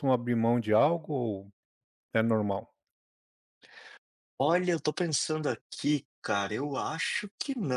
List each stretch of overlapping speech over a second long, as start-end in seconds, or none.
none